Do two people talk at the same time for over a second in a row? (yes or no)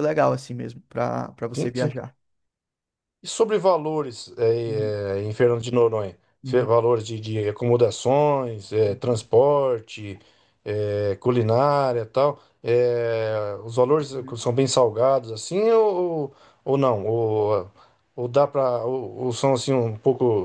no